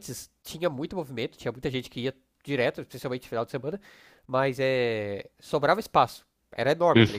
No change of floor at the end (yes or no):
yes